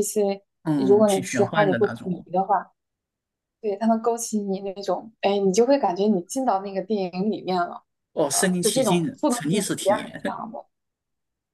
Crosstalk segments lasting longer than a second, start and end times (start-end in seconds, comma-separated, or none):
0.6-2.2, 8.3-10.4